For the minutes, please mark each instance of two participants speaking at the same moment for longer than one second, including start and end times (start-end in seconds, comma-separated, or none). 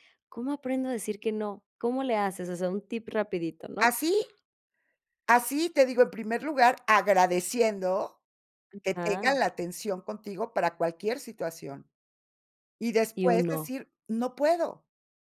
none